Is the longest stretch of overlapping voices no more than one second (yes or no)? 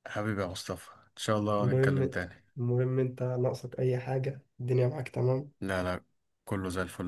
yes